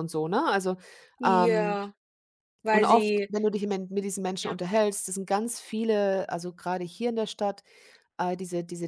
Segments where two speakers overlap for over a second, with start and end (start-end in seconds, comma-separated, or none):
none